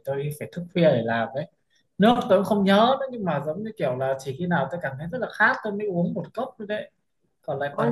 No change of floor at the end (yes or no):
no